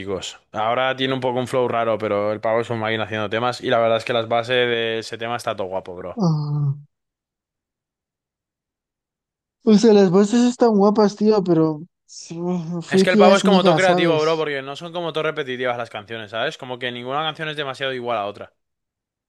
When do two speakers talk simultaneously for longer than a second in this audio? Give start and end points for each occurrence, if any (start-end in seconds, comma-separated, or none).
12.9-14.5